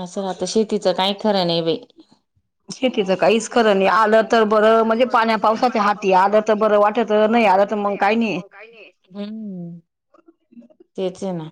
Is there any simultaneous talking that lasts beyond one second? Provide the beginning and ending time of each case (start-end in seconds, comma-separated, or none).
3.5-8.2